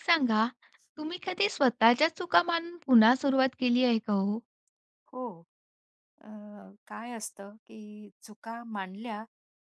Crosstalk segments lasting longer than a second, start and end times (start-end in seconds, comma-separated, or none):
none